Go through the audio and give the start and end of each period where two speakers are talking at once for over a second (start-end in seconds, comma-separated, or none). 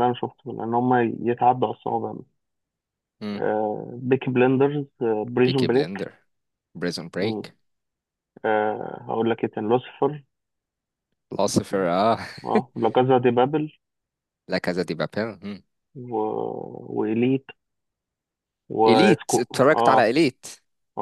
18.9-20.1